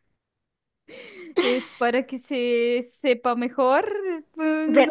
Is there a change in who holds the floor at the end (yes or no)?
yes